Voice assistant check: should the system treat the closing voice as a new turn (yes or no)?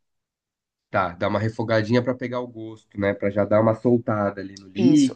yes